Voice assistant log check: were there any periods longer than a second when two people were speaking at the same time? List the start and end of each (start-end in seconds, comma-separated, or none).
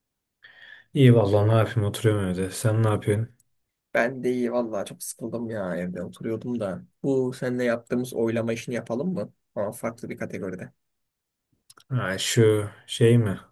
none